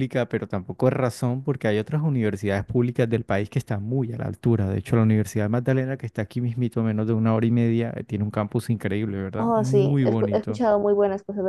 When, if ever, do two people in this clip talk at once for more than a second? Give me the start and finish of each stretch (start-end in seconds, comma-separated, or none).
9.3-10.6